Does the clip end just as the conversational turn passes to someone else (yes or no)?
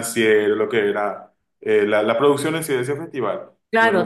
yes